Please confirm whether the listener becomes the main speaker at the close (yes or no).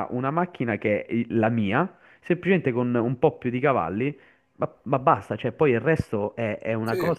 no